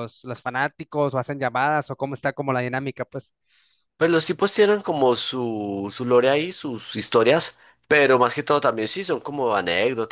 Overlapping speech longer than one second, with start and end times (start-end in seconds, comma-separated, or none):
none